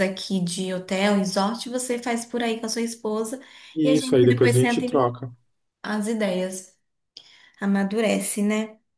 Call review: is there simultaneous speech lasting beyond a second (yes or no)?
yes